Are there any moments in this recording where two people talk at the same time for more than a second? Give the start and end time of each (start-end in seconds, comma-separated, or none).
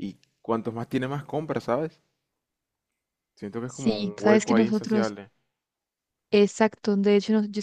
3.6-5.2